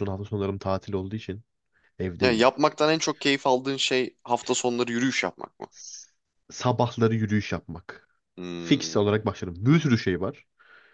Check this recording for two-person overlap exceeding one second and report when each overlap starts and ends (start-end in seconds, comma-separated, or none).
none